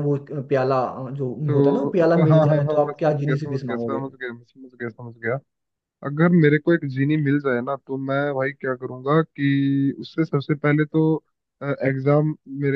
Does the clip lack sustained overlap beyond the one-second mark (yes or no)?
no